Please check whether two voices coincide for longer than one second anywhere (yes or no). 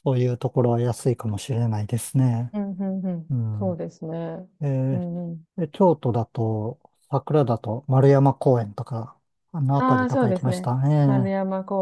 yes